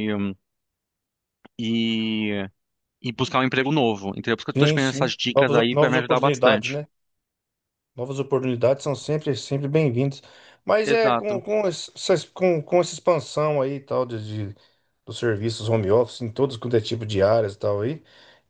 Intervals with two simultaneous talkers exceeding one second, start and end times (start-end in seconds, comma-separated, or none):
4.6-6.8